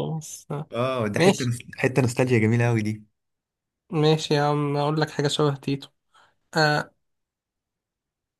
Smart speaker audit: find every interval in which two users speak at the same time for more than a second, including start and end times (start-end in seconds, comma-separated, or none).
none